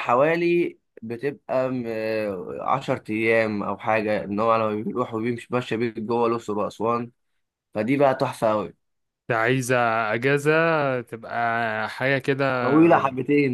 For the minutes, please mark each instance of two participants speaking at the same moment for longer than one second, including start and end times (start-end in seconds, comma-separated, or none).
none